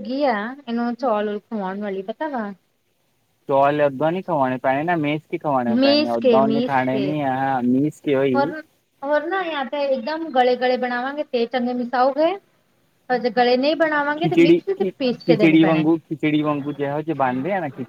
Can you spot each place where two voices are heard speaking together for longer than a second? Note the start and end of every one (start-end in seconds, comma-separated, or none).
14.2-15.8